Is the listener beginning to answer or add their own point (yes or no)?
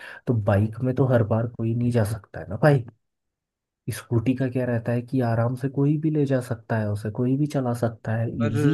yes